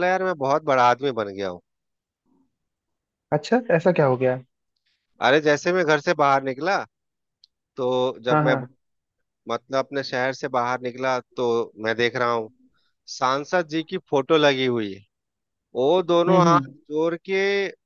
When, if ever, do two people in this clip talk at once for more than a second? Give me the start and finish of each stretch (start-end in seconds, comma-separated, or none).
none